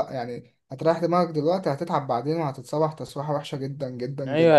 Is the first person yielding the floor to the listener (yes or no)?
yes